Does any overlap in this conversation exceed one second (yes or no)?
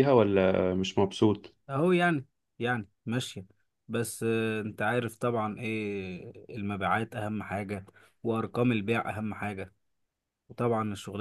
no